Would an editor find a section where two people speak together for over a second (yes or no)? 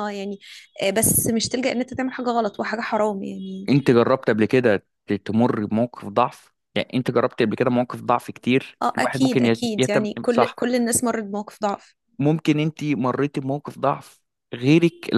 yes